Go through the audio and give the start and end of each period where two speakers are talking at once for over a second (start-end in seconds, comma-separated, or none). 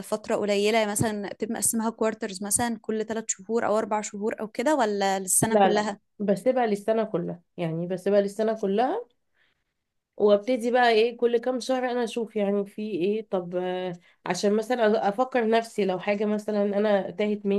none